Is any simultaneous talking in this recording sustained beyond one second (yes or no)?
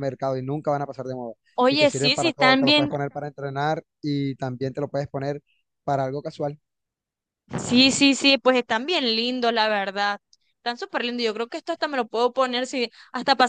yes